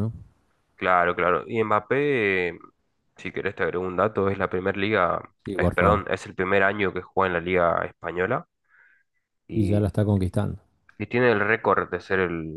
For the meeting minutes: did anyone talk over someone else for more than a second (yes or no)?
no